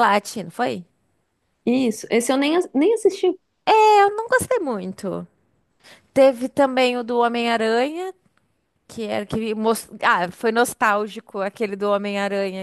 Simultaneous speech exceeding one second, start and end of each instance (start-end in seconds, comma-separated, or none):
none